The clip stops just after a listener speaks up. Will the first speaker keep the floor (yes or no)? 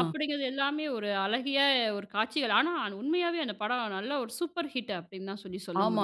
no